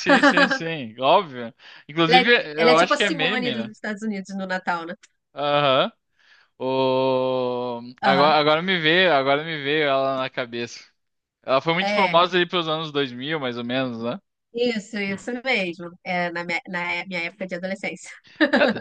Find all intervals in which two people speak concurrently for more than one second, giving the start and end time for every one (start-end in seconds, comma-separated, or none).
2.1-3.7